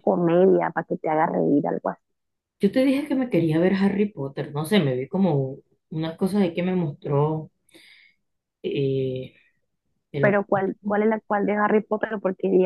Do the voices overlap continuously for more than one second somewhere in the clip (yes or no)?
no